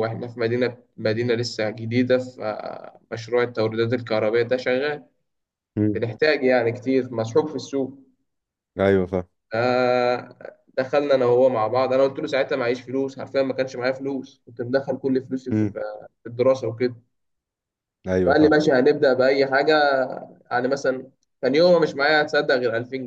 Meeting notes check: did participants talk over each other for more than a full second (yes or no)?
no